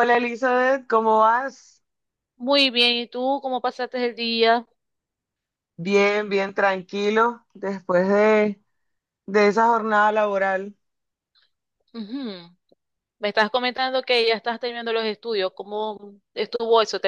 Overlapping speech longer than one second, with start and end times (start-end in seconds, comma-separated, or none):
none